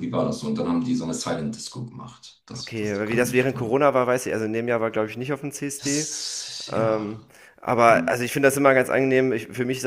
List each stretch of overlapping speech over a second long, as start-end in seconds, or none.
2.6-3.8